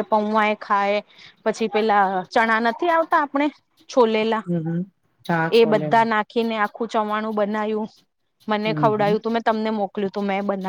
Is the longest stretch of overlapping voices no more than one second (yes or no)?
yes